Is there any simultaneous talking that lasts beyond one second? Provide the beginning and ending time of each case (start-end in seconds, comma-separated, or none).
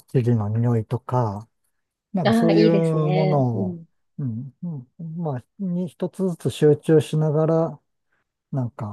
2.2-3.8